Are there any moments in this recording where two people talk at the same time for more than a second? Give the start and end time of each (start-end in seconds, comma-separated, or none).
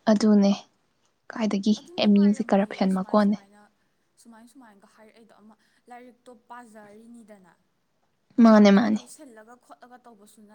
1.8-3.4